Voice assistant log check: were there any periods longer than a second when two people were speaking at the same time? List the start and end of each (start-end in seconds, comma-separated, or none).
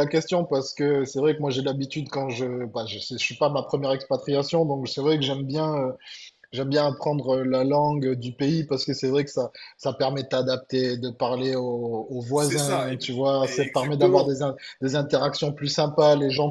12.3-14.3